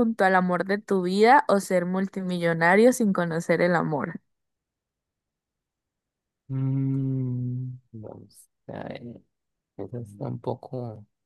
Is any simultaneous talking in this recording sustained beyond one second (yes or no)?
no